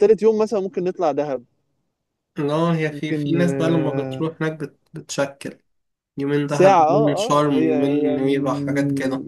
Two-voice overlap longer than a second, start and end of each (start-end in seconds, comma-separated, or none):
2.9-4.2, 6.5-8.2